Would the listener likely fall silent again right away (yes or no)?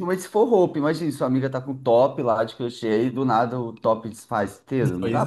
no